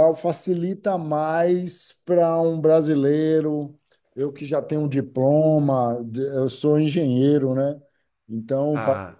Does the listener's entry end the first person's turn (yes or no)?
no